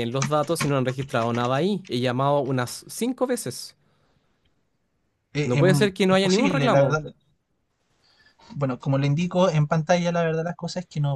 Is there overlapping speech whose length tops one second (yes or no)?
yes